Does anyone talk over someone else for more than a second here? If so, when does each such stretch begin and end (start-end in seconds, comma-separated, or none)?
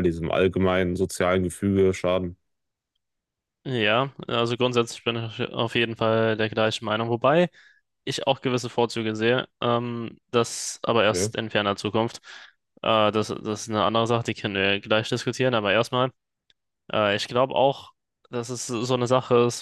none